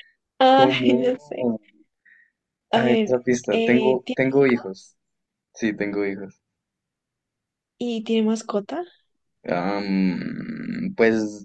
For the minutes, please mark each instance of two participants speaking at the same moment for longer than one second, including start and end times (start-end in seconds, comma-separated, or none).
2.8-4.9